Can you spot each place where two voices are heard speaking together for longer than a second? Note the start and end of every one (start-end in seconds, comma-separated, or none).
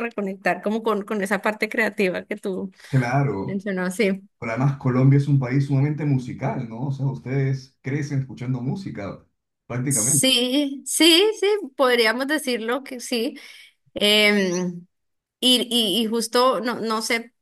none